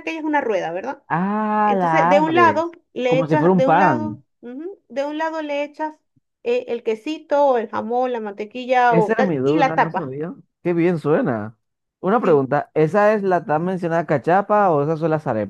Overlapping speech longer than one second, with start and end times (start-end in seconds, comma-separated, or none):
1.6-4.2, 8.9-10.1